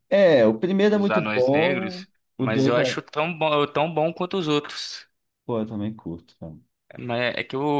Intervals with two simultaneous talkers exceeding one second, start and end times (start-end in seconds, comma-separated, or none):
0.9-3.0